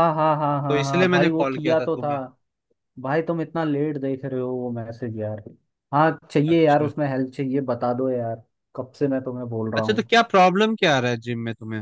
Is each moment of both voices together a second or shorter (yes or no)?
no